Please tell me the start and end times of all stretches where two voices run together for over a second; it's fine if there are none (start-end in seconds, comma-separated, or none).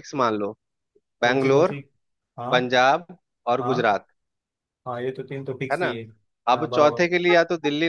none